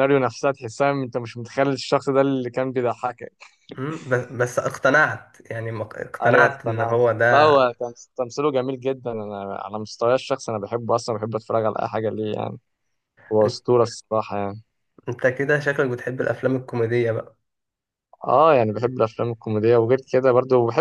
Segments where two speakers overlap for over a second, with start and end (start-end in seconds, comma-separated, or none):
6.2-7.5